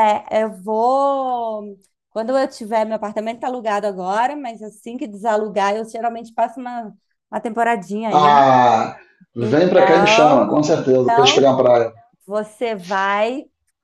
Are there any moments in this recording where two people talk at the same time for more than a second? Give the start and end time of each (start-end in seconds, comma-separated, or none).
9.4-11.5